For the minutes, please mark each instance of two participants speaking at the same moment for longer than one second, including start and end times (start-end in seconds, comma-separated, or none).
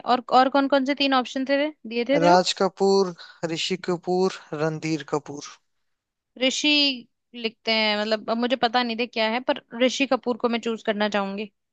none